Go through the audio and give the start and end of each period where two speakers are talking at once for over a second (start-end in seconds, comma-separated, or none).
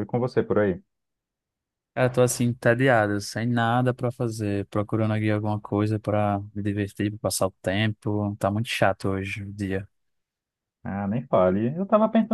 none